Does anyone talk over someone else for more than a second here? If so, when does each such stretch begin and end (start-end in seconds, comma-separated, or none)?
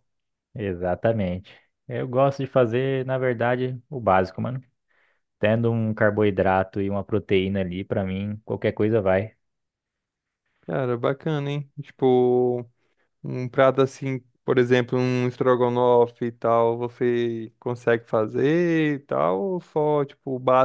none